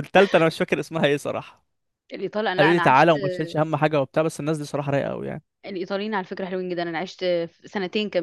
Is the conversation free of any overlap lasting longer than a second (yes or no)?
yes